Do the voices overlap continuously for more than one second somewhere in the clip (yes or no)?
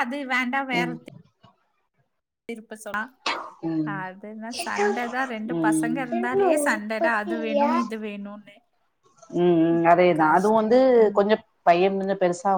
yes